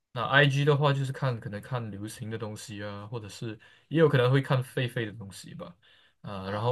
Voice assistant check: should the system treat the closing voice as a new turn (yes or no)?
no